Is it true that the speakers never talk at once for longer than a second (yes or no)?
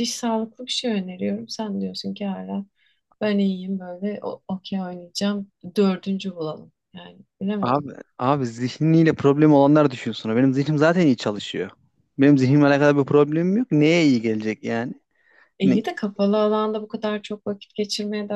yes